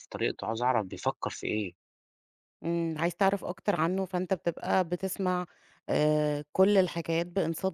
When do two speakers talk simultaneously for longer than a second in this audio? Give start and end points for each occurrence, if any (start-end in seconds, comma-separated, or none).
none